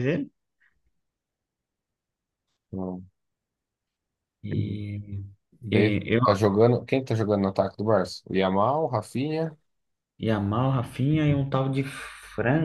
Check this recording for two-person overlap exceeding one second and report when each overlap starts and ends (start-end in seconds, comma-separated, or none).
none